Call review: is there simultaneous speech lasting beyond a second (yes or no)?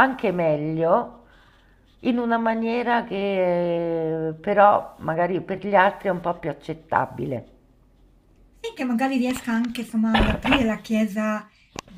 no